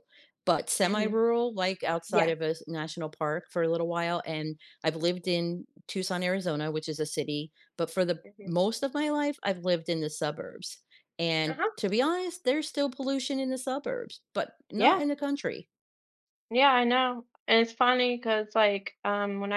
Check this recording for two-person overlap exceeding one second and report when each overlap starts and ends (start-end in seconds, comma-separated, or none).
none